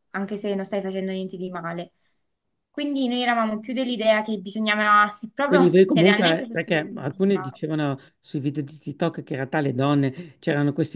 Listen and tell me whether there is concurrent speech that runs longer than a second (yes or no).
yes